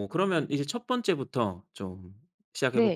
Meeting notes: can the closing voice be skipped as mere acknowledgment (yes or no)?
no